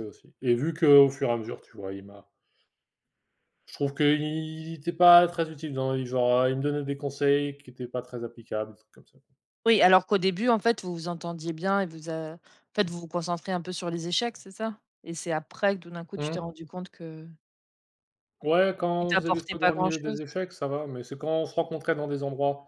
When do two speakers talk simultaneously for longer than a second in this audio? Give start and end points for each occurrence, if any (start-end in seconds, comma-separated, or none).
19.0-20.2